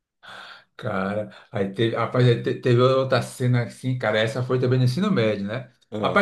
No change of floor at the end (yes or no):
yes